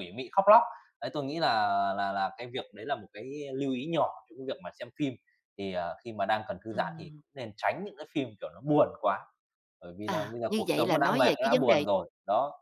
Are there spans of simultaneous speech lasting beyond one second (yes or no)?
yes